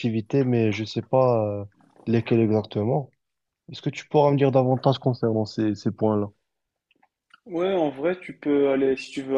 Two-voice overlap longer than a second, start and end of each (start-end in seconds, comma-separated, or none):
none